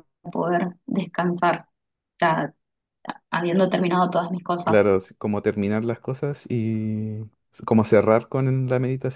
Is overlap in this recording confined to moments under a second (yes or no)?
yes